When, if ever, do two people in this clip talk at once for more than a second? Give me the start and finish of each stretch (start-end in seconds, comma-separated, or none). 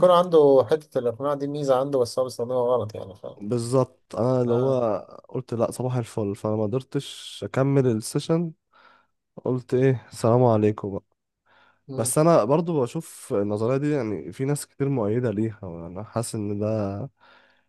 none